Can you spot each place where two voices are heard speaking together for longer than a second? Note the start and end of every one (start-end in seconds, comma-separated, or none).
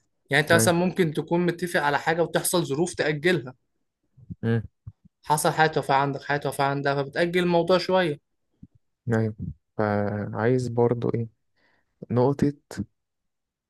none